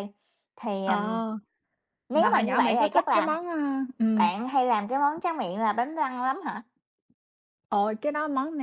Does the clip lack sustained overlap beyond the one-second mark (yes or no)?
no